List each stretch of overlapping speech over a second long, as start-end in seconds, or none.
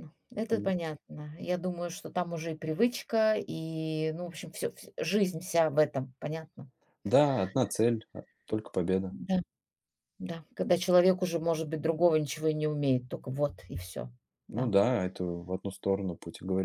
none